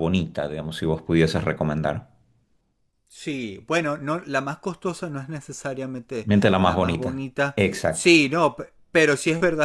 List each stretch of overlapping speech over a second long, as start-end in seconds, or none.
6.2-8.1